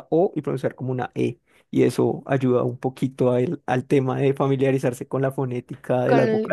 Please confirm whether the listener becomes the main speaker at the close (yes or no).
yes